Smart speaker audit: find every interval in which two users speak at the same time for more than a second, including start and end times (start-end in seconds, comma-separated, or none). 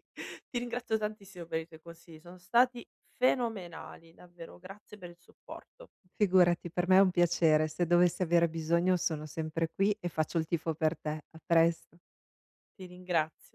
none